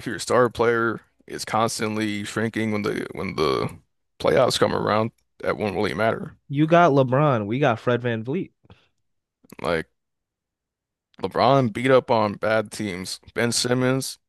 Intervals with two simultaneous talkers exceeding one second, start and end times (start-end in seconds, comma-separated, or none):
none